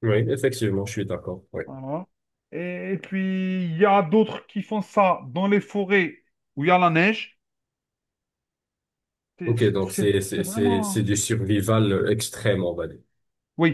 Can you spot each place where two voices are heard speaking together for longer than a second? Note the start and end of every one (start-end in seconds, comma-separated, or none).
9.4-11.1